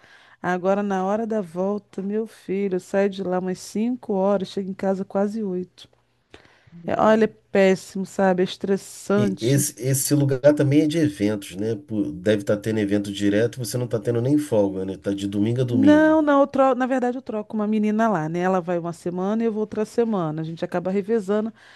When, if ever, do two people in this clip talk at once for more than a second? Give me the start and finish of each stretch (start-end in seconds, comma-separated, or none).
none